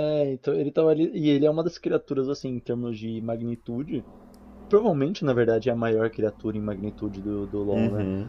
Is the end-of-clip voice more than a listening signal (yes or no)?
no